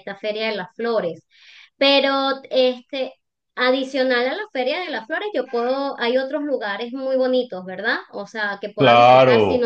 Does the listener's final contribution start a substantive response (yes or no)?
yes